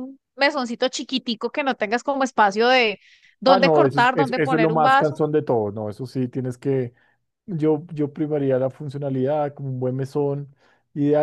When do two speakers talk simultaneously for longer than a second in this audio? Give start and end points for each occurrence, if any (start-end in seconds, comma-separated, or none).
3.5-5.2